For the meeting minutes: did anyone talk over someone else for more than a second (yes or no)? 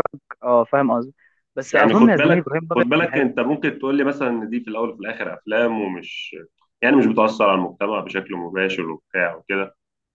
yes